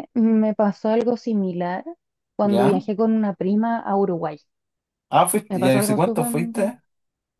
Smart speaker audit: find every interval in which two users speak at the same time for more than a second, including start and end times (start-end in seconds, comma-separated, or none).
5.5-6.7